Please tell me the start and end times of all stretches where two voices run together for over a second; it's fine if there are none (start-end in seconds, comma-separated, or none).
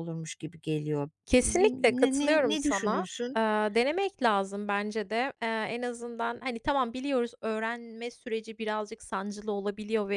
1.2-3.4